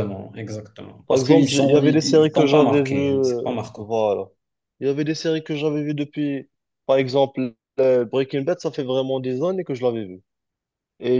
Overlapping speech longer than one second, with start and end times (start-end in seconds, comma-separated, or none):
1.1-3.9